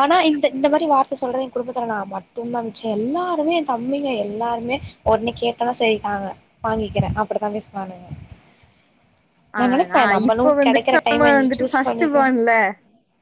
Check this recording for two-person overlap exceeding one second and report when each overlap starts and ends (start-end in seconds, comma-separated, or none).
9.6-12.3